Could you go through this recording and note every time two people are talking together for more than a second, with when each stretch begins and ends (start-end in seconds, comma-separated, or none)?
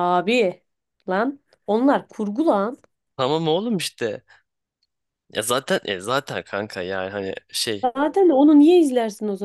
none